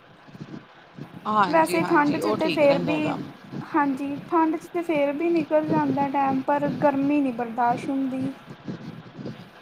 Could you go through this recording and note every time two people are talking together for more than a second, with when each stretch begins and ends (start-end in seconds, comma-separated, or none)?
1.5-3.0